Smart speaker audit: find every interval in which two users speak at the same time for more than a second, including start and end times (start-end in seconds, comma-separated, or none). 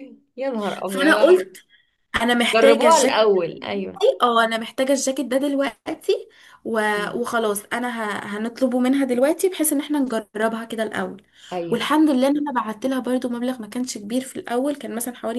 2.5-4.0